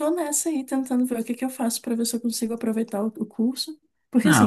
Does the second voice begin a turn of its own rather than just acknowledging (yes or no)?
yes